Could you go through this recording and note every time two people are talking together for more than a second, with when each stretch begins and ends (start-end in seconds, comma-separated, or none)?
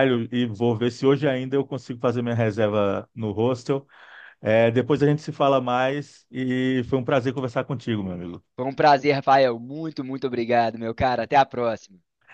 none